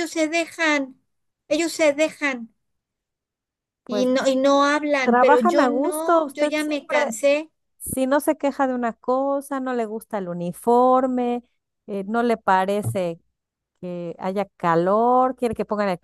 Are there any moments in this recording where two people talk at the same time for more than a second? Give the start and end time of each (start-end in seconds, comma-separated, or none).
5.0-7.1